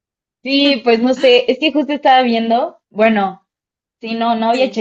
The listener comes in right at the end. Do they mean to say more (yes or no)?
no